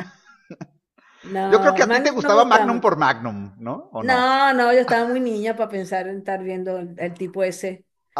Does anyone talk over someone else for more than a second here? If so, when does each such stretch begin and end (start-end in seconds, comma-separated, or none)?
1.5-2.9